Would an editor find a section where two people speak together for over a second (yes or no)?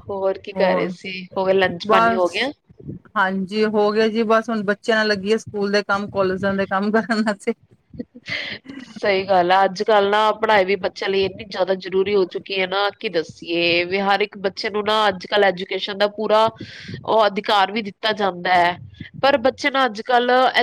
no